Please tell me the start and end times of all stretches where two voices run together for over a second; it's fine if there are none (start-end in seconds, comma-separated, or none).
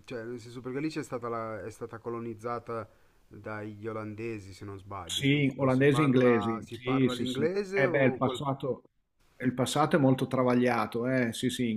5.1-8.4